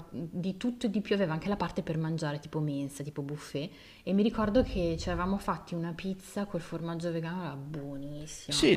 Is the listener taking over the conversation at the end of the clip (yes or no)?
yes